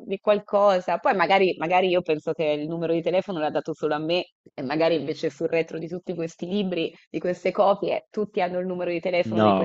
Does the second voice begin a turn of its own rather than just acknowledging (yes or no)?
yes